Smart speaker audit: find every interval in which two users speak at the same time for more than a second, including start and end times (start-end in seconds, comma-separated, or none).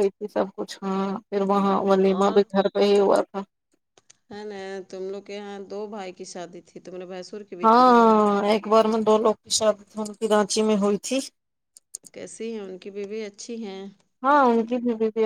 none